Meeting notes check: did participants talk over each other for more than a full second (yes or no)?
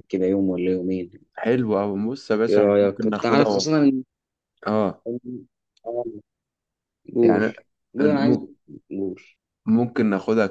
yes